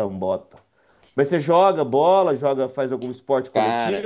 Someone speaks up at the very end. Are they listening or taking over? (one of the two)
taking over